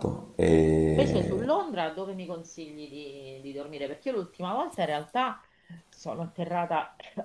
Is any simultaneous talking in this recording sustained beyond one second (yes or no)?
no